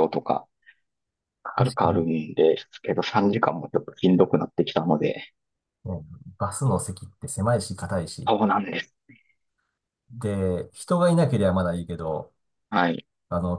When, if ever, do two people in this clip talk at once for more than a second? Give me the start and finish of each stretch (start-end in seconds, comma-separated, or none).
none